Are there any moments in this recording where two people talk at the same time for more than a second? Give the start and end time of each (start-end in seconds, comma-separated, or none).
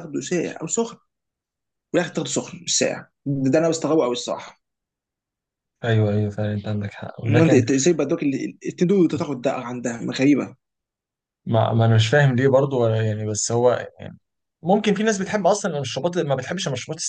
none